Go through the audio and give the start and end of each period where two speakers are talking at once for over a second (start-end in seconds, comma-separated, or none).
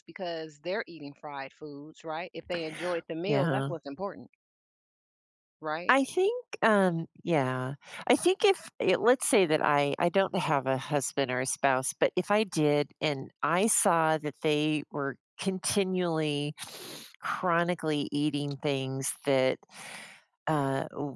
none